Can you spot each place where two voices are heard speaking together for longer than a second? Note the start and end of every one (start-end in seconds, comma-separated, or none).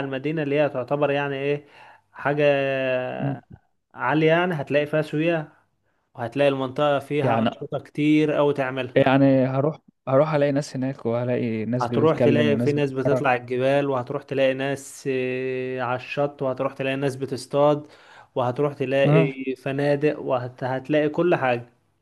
11.8-13.3